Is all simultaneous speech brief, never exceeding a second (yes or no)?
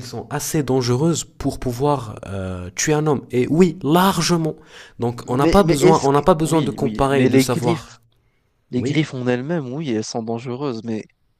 no